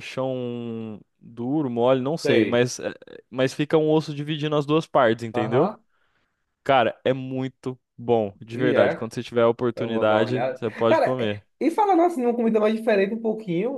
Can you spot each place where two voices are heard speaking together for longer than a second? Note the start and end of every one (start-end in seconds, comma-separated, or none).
9.8-11.4